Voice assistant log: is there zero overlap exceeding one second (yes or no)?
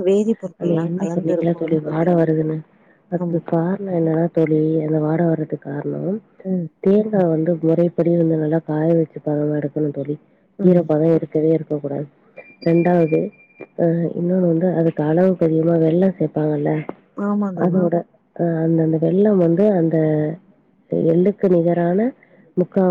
no